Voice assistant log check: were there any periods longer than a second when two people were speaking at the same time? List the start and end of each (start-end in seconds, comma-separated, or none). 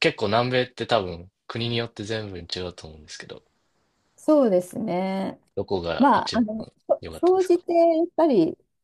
6.0-7.6